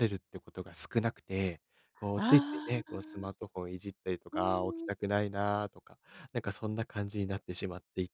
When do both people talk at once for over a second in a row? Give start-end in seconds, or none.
2.2-3.4